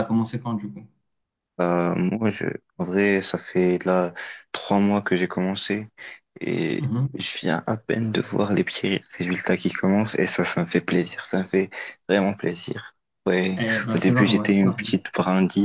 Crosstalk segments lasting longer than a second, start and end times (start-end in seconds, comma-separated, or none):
13.6-14.9